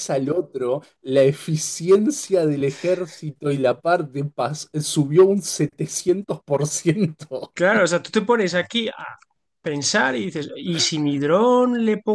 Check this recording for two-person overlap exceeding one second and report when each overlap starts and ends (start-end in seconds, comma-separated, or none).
none